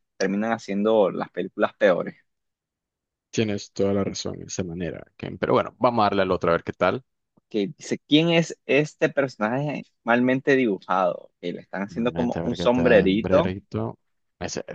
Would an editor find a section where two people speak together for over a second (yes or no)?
yes